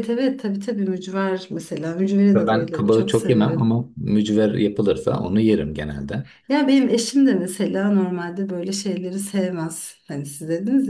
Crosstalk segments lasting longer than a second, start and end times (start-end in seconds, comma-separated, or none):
2.3-3.8